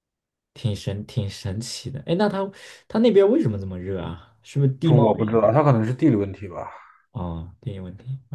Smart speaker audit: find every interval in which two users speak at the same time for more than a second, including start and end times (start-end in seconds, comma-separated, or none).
none